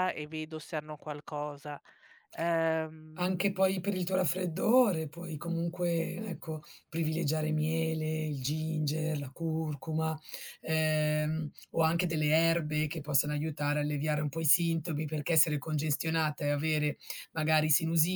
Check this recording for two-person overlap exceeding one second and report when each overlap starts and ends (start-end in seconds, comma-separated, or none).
none